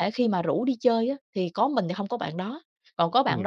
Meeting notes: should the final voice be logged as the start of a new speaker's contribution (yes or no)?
no